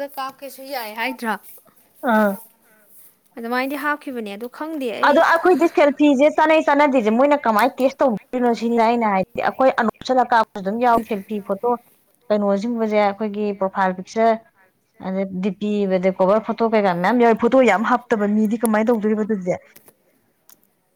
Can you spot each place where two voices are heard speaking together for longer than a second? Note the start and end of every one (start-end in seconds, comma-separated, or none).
none